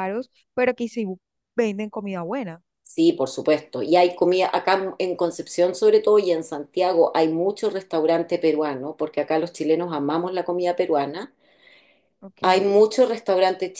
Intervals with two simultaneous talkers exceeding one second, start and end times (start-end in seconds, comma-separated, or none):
none